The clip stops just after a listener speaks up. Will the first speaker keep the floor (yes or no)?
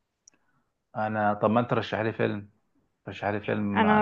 no